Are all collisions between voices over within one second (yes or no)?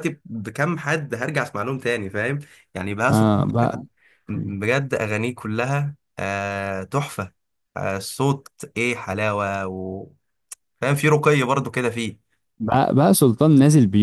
yes